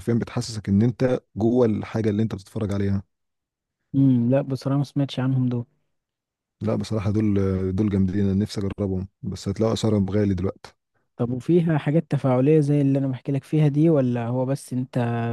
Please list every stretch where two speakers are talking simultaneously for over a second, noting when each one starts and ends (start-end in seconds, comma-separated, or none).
none